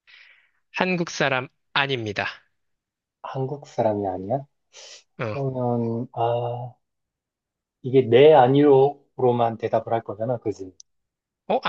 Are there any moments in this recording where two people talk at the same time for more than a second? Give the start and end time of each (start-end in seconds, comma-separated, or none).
none